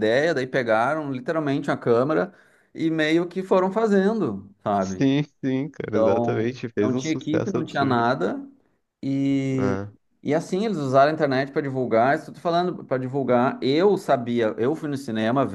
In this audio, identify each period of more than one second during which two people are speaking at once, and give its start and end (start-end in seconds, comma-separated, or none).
5.9-8.0